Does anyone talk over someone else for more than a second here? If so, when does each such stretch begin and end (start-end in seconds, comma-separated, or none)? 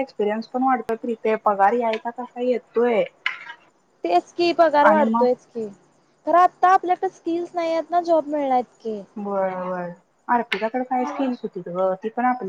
none